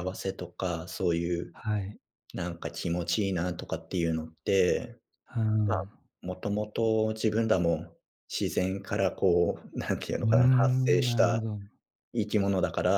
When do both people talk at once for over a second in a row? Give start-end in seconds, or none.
10.2-11.4